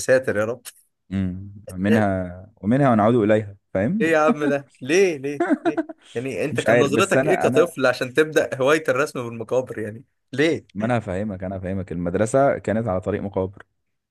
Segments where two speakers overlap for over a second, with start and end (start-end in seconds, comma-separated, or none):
6.5-7.7